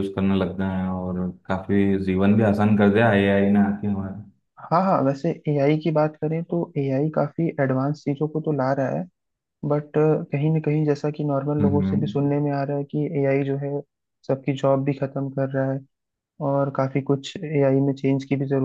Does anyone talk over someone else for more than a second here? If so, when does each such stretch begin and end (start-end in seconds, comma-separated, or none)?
none